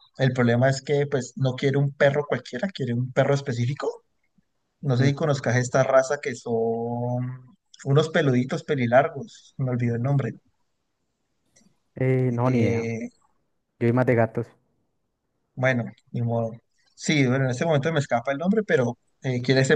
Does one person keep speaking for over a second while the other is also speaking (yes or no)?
no